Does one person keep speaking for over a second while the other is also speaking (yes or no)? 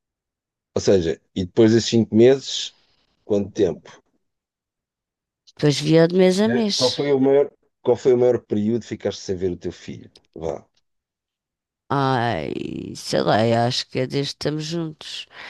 no